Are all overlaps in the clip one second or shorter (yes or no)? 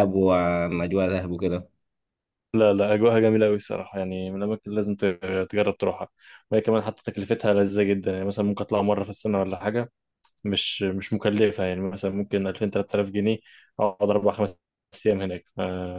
yes